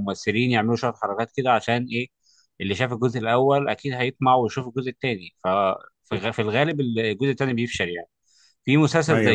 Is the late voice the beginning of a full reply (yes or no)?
no